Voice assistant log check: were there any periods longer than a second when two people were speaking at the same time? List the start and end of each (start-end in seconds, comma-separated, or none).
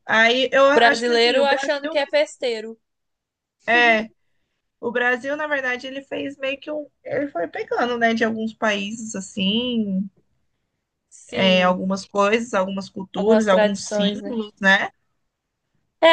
0.6-2.0, 13.1-14.3